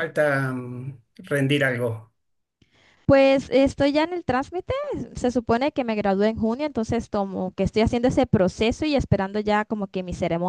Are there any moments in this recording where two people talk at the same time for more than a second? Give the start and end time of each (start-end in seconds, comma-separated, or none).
none